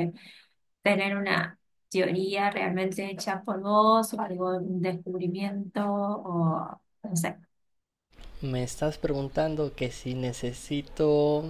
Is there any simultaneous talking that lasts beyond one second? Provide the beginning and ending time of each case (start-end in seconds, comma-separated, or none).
none